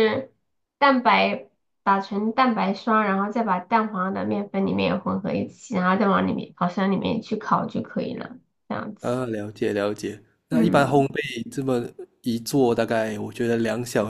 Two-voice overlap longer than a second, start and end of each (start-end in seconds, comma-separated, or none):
none